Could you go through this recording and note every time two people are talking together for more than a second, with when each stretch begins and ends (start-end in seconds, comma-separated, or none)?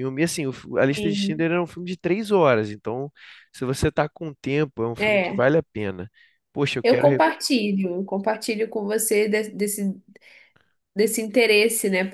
none